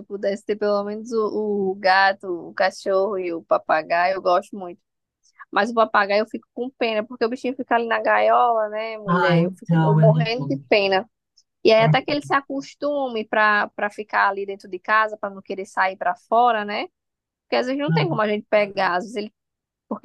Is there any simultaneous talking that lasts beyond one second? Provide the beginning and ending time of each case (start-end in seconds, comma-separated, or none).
9.1-10.6